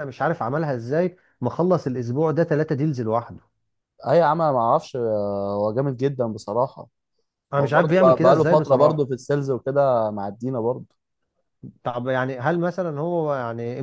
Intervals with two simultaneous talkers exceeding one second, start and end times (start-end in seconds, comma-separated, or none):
7.6-9.1